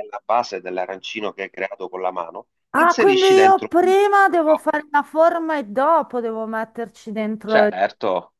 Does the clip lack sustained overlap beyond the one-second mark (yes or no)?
no